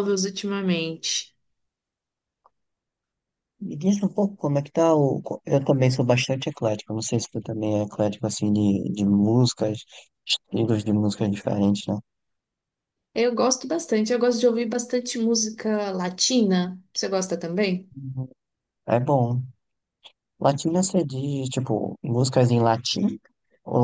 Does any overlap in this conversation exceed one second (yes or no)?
no